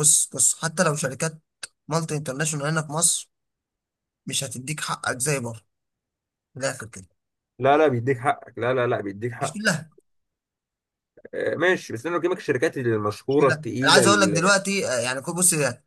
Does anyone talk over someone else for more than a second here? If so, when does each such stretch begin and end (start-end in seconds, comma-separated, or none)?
13.3-14.6